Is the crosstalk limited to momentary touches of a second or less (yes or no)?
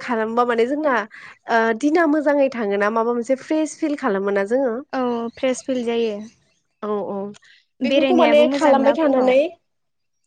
no